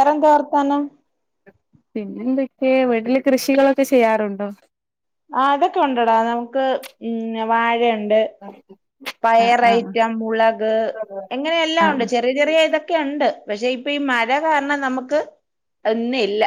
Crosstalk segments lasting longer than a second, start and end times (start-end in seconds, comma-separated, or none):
none